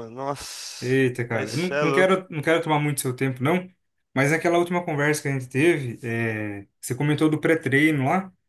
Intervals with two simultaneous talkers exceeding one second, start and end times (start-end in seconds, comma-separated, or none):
0.8-2.1